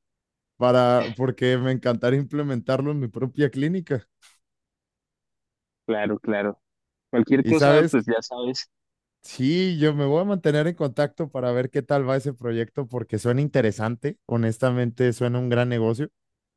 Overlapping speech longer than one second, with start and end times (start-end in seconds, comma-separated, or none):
none